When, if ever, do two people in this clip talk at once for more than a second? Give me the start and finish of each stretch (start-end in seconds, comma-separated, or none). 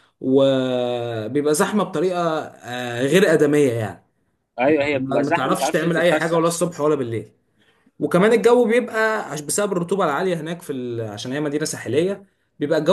4.9-6.4